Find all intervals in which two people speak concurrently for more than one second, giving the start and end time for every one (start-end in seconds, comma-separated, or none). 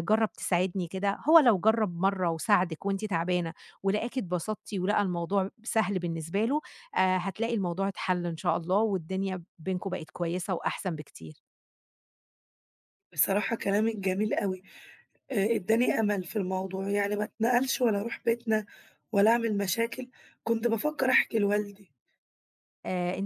none